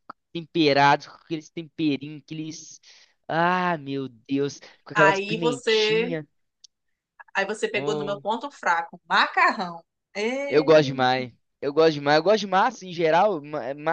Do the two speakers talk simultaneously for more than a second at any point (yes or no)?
yes